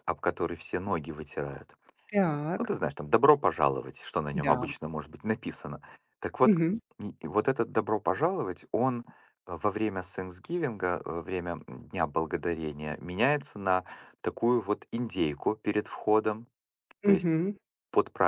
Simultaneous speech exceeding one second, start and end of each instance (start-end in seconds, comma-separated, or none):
none